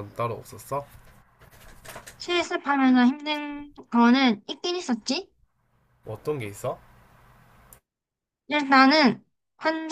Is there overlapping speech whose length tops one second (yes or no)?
no